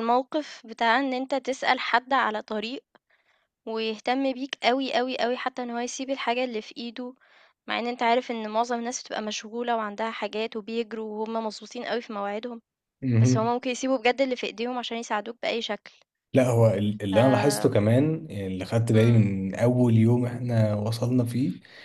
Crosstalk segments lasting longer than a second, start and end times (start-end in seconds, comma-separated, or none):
none